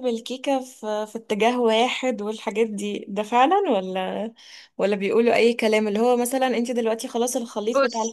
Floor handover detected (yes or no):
no